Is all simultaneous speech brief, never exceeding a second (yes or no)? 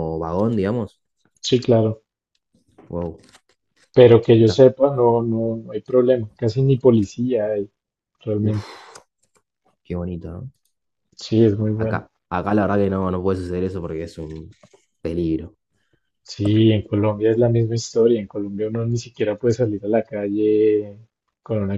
yes